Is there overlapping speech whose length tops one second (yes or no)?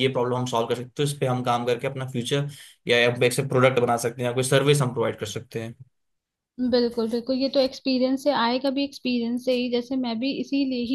no